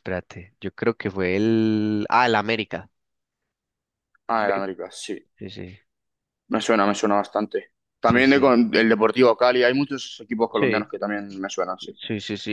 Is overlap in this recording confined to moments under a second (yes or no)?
yes